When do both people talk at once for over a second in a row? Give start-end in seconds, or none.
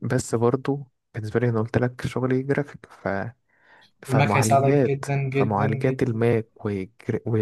4.1-6.2